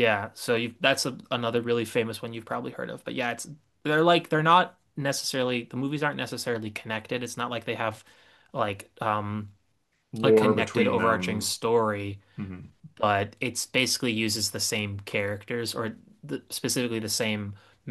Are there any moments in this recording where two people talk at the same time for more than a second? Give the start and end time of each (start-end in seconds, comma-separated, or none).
10.2-11.5